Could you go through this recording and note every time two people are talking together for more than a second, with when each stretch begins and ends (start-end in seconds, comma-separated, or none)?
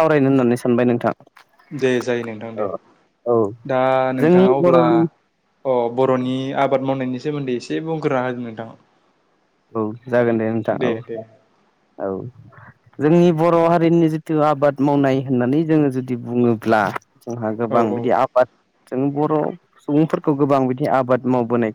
none